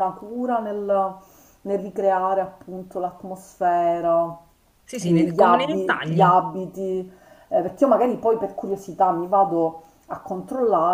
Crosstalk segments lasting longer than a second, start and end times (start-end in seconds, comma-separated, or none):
5.0-6.3